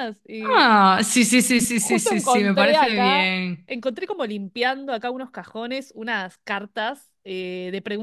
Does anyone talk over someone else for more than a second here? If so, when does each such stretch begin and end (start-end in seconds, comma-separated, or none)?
1.8-3.7